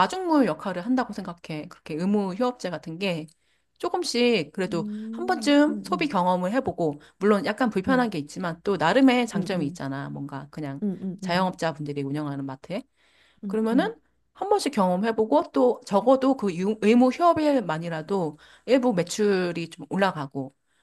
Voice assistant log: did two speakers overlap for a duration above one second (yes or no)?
yes